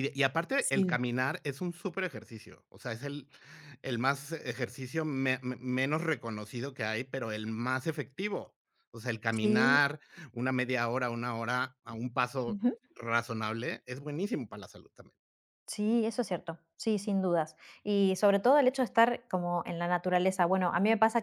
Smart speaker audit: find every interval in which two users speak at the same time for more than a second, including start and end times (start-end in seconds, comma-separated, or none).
none